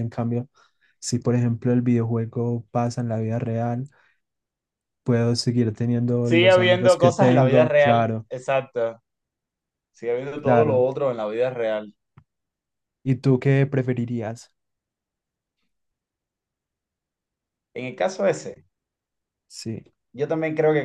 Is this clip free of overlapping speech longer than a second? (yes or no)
no